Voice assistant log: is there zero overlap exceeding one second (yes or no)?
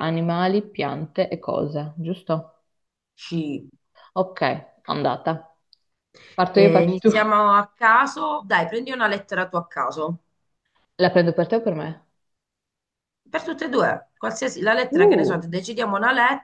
yes